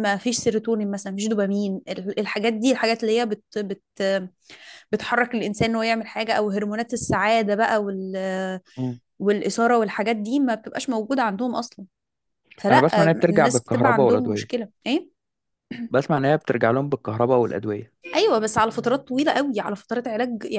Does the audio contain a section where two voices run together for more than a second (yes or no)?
yes